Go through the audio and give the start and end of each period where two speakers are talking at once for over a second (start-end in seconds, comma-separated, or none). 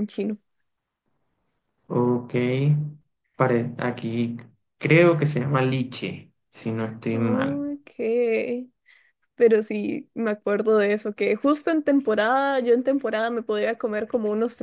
none